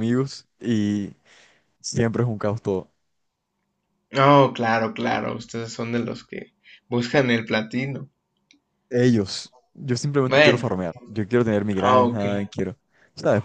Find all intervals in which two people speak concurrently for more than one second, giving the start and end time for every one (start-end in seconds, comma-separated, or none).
none